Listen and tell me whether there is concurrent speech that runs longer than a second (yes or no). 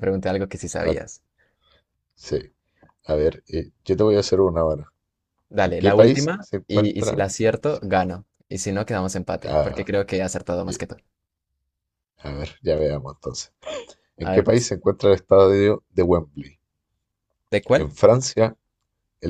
yes